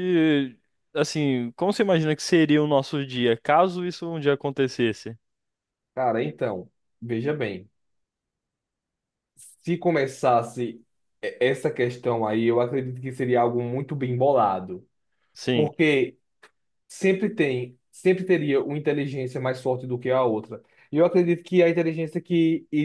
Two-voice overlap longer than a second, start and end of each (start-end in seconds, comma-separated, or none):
none